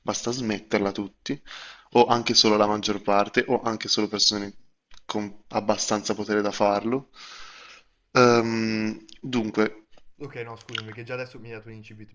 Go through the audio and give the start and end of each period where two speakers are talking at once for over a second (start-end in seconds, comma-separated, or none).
none